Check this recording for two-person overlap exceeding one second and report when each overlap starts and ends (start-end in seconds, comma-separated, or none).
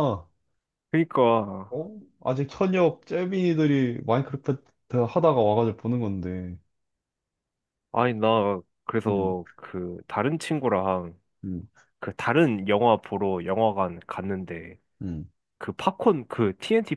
none